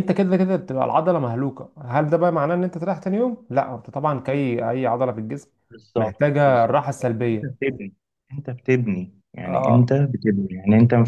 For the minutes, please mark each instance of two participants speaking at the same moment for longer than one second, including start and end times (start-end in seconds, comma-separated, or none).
6.0-7.6